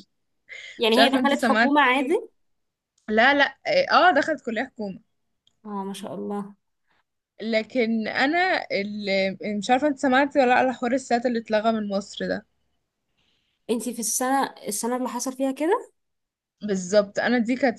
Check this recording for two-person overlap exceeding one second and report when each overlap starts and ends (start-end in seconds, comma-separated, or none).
0.9-2.2